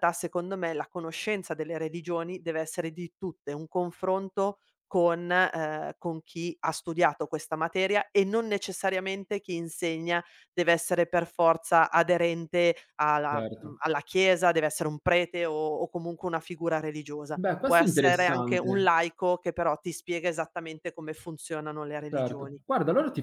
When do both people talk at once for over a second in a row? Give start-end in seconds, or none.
17.3-18.9